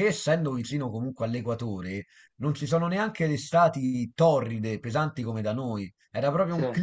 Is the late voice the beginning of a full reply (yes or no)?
no